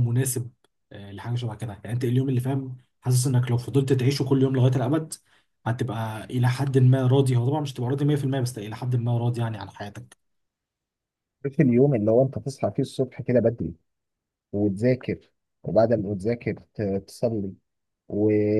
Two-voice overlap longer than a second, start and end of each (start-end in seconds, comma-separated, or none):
none